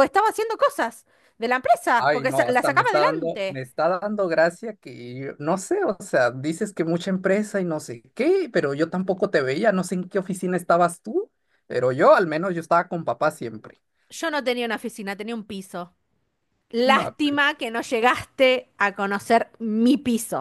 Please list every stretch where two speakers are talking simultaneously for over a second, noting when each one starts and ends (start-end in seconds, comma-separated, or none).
2.0-3.6